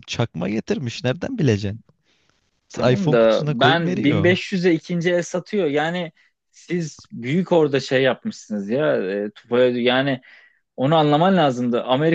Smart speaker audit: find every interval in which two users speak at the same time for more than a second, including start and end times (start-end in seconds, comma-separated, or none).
2.7-4.4